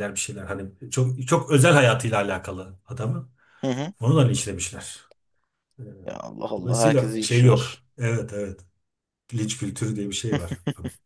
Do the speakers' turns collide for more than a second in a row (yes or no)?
yes